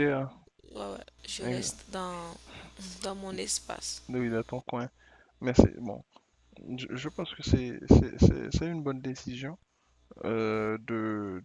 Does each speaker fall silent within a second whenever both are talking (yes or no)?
yes